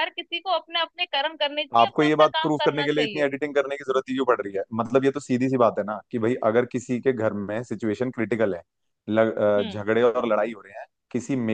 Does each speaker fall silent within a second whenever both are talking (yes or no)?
no